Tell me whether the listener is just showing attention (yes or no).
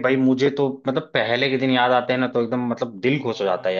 no